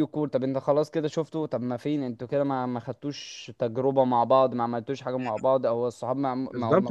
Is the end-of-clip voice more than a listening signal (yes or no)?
yes